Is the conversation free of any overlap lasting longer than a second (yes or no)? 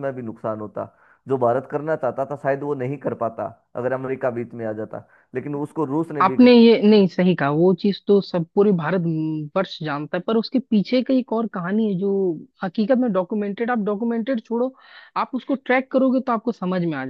yes